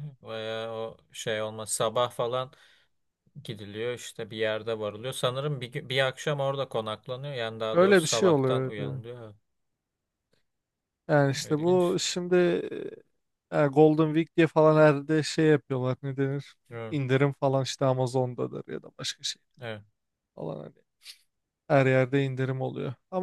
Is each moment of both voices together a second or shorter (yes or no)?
no